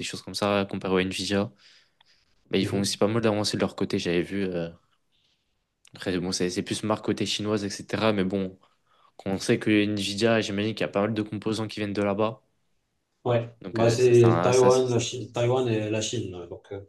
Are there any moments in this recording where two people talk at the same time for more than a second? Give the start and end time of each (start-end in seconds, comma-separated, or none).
13.6-15.0